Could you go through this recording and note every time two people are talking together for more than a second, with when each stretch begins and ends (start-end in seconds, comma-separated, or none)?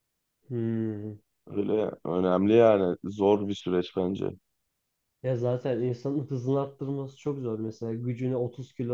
none